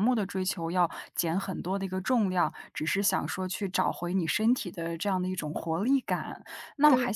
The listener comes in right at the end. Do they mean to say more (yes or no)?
no